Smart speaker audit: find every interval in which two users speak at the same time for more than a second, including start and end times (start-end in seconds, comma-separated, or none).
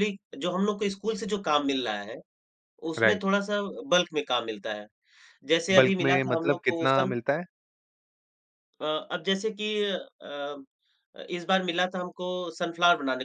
5.8-7.2